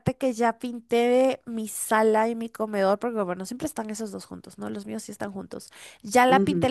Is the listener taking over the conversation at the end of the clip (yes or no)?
no